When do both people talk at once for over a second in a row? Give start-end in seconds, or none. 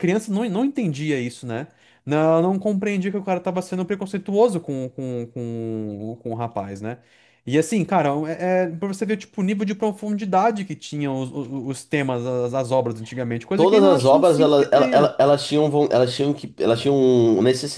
13.6-15.2